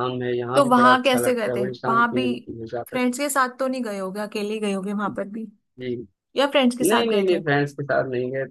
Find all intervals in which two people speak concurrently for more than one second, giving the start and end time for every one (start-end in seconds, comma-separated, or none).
0.5-2.2